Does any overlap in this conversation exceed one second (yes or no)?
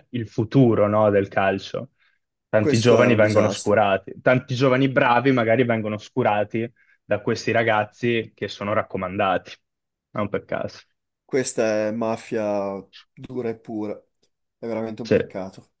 yes